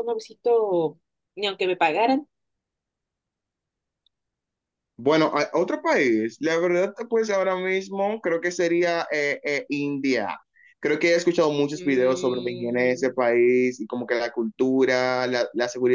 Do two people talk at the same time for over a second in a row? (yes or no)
yes